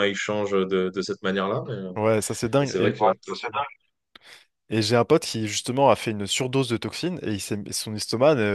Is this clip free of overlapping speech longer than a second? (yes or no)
yes